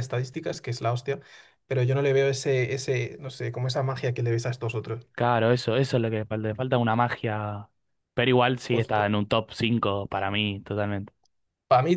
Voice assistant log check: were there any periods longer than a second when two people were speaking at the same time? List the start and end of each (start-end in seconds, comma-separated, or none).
none